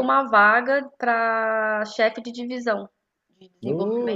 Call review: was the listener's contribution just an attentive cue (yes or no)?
yes